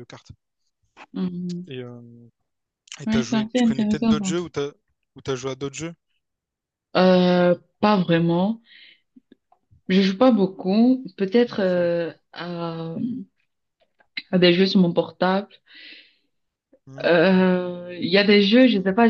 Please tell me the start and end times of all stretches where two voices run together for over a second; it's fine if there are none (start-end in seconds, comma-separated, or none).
3.1-4.4